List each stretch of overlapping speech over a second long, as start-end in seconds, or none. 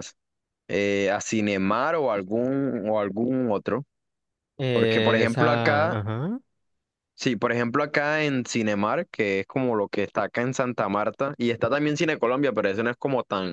4.7-6.0